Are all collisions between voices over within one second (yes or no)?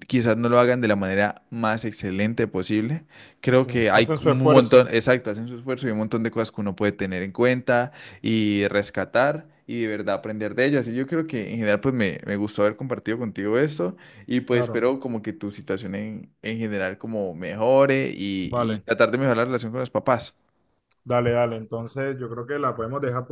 no